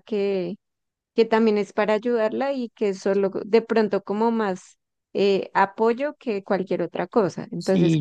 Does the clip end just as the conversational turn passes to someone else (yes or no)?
yes